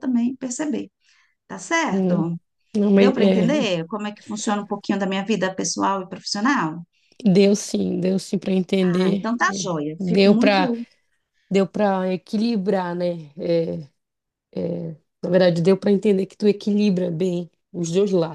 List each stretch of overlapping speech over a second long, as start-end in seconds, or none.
8.8-10.7